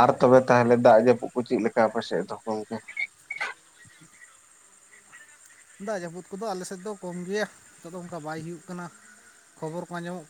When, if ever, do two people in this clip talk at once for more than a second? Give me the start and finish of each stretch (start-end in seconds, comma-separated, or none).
none